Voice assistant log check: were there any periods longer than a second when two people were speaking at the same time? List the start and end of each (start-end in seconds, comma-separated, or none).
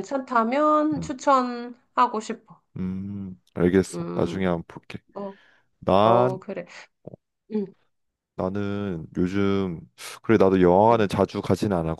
none